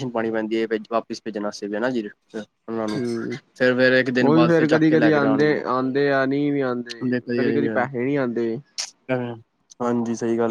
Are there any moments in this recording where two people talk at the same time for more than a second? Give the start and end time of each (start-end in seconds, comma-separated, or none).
none